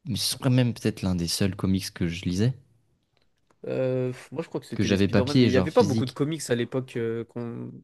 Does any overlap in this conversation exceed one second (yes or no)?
yes